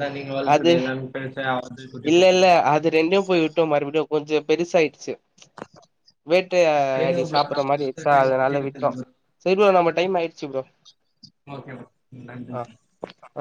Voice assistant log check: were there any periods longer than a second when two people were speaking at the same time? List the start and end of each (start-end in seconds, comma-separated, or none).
6.9-8.9